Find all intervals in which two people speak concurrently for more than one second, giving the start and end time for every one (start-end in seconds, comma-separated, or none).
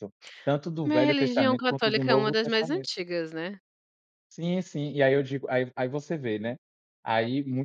0.8-2.9